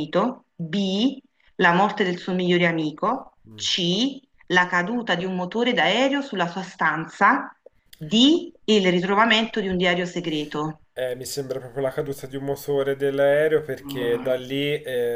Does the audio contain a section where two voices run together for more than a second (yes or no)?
no